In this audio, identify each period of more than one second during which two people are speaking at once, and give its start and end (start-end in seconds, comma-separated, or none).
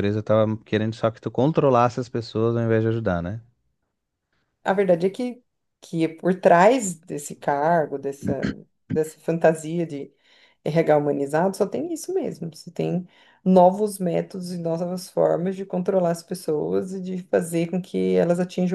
none